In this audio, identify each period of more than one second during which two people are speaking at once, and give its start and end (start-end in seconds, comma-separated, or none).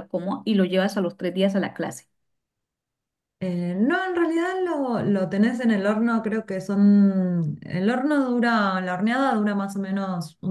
none